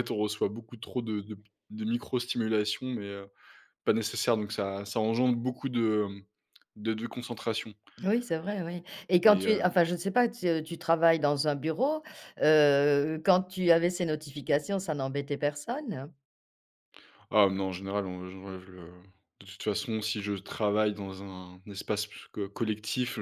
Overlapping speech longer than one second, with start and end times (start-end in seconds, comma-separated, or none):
none